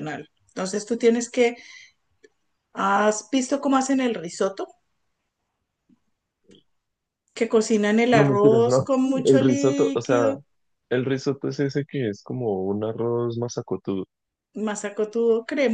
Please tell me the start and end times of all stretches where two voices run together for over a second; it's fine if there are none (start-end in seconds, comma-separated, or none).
8.1-10.3